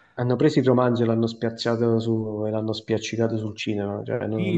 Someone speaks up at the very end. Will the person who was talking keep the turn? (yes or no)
no